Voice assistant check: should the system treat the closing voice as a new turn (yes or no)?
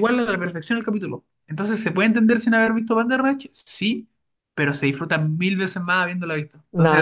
yes